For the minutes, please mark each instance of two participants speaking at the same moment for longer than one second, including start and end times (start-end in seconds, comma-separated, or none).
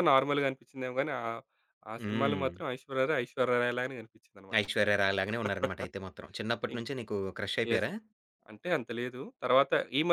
none